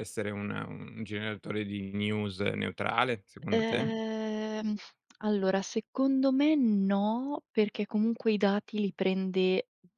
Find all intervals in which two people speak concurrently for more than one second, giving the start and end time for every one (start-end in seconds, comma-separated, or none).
none